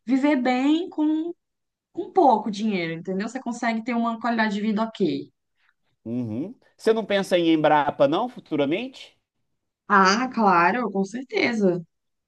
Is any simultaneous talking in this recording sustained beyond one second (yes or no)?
no